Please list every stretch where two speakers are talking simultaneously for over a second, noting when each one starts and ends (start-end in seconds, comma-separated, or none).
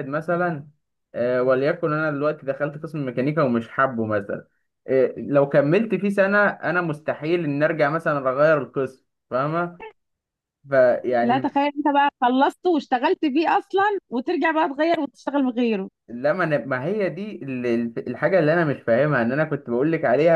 none